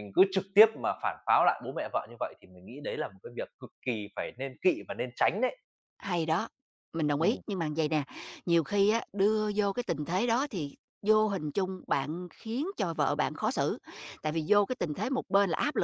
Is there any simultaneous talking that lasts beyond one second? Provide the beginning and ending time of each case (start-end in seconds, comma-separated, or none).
none